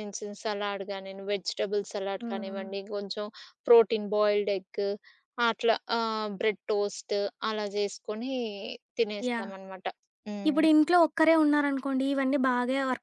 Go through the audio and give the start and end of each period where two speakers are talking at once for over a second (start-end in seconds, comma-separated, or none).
none